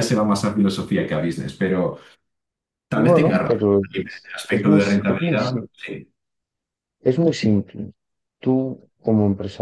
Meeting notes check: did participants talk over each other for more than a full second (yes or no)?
yes